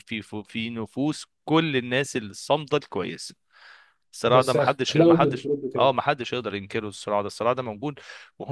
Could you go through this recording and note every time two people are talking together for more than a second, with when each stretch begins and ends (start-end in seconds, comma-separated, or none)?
4.2-5.9